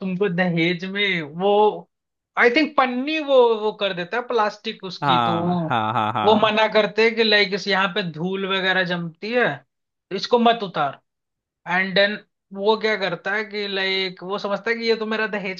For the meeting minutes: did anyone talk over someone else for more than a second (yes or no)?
no